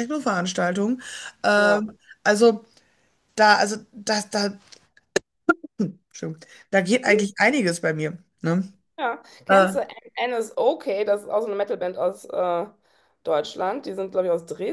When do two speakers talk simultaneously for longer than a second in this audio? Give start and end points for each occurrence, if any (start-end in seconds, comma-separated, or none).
none